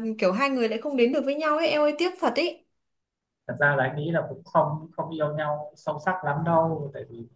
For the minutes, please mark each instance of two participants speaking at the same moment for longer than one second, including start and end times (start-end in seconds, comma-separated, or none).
none